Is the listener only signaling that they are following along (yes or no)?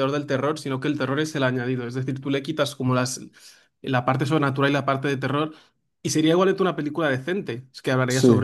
yes